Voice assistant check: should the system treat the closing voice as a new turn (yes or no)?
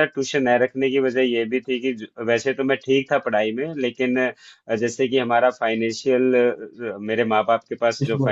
no